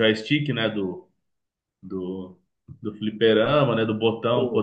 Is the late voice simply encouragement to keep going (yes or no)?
yes